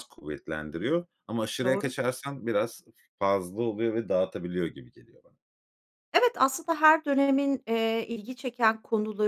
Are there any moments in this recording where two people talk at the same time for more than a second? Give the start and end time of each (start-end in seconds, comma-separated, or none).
none